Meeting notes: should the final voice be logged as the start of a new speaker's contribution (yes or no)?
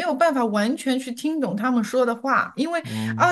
no